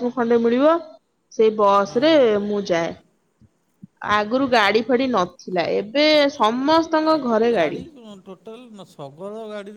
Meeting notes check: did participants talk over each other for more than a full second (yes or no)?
no